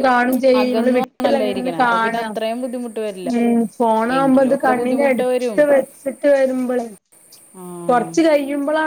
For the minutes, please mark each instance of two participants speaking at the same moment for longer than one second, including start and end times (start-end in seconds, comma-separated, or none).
0.6-2.2, 4.2-5.6